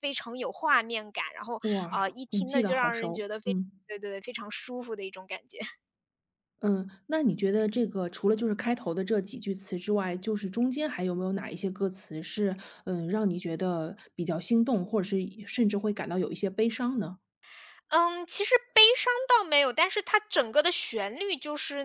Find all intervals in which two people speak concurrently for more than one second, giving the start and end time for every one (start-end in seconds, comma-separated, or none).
1.6-3.7